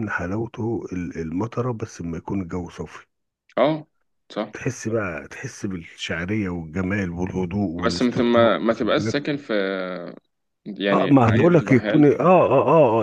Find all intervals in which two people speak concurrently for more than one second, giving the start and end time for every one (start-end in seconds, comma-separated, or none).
7.9-9.2, 10.9-12.1